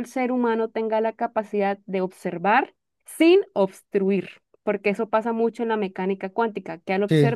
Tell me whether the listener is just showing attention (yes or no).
no